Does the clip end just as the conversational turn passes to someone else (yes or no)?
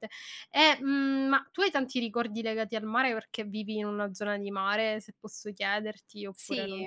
yes